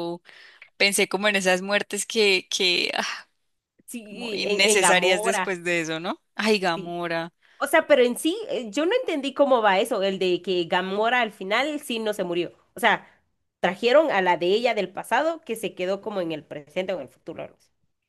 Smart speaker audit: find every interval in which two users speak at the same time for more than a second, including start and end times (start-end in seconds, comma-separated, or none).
4.1-5.5